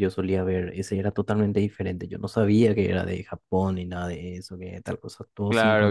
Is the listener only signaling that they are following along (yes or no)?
no